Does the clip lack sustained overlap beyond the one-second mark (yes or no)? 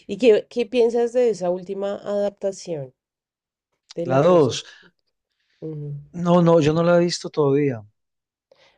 yes